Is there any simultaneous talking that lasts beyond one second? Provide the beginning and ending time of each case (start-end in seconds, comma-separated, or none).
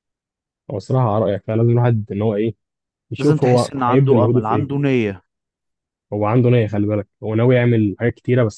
3.2-4.7